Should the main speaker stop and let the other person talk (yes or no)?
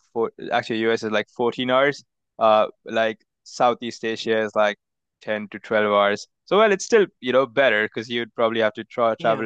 no